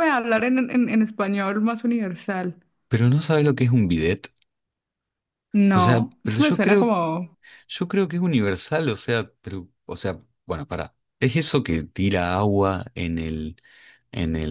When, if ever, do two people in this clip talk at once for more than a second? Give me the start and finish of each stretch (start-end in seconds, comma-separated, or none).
5.7-6.9